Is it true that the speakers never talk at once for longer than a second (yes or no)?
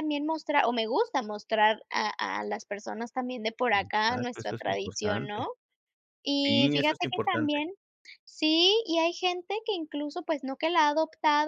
no